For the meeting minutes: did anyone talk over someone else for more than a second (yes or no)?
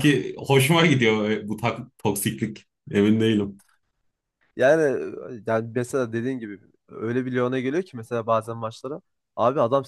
no